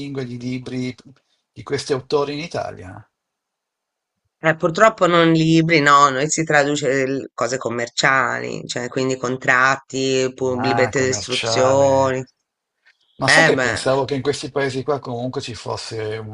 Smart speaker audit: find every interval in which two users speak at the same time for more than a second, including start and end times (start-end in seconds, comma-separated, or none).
10.6-12.2